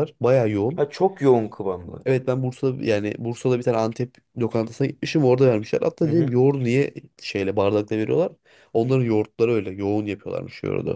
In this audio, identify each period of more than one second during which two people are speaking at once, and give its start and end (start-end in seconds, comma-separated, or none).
none